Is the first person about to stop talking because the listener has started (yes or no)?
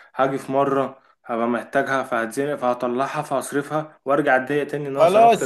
yes